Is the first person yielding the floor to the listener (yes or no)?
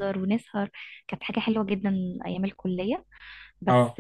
no